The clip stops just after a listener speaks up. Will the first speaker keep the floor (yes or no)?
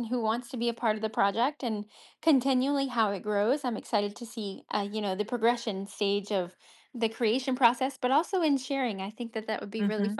no